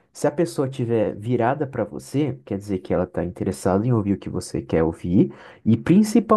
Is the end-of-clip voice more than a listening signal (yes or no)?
no